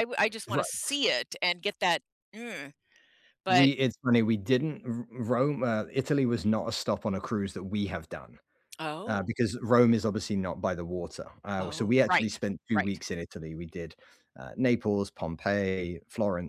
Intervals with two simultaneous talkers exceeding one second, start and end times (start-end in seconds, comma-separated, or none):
11.6-13.0